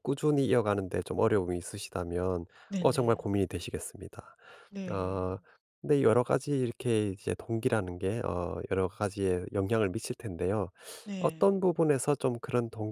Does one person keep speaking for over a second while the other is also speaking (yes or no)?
no